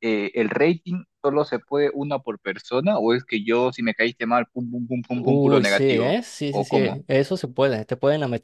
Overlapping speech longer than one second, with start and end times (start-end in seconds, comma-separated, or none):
5.2-7.0